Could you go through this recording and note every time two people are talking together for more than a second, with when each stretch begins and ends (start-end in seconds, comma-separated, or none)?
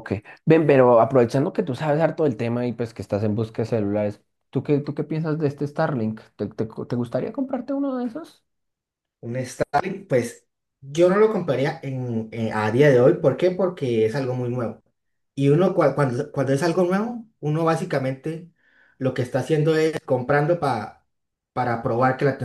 none